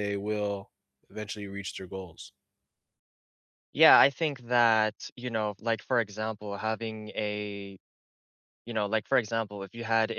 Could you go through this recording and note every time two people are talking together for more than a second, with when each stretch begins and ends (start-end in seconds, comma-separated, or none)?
none